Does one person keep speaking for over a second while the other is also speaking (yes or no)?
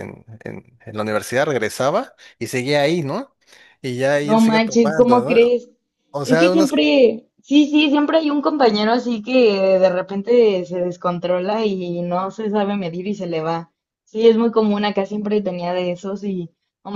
yes